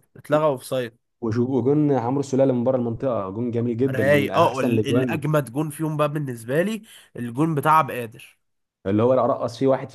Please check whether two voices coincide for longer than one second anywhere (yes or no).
yes